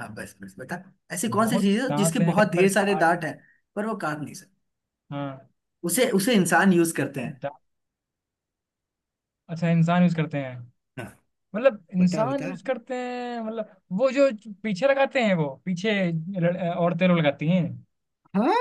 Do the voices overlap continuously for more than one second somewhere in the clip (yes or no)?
yes